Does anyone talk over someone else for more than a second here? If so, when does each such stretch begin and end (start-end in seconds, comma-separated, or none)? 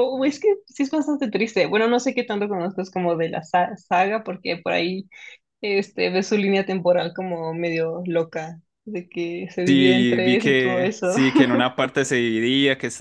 9.7-11.1